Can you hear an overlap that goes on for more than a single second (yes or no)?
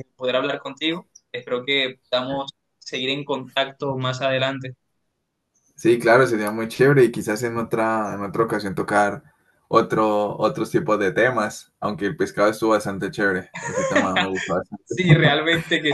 no